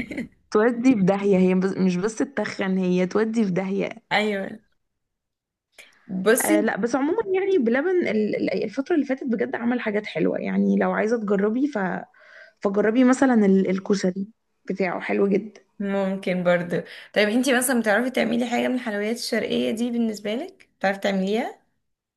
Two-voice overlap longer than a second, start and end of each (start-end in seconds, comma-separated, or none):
none